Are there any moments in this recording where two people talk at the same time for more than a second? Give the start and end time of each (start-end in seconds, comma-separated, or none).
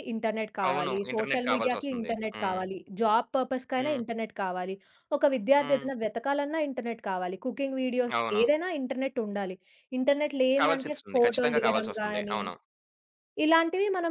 0.7-2.6, 10.6-12.4